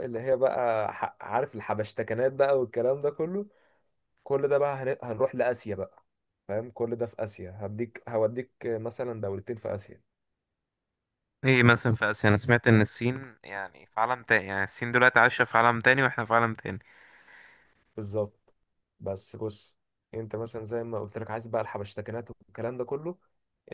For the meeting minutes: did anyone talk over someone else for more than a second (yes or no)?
no